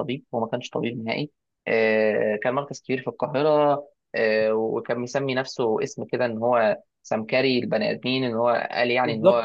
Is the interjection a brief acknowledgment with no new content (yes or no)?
no